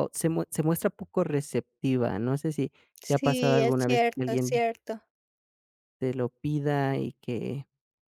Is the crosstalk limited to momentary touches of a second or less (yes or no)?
no